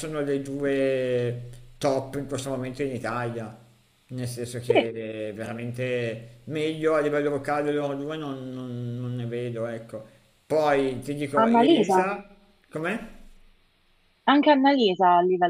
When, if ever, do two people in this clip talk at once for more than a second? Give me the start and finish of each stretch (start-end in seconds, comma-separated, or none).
none